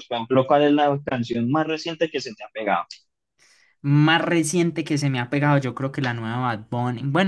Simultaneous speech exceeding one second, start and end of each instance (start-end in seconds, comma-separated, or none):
none